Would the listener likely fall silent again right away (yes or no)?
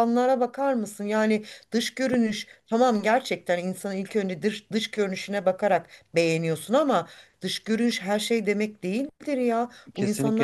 no